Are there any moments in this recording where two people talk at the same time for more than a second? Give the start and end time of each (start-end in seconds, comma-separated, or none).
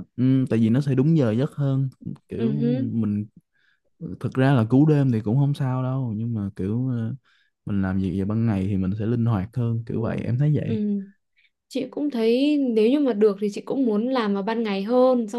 none